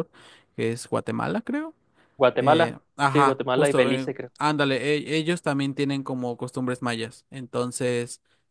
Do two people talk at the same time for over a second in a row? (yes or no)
yes